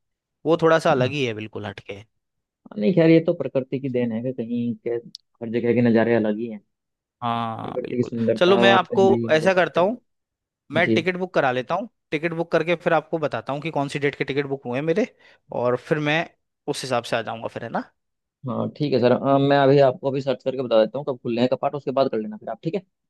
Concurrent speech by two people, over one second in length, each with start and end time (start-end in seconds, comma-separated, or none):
7.6-9.8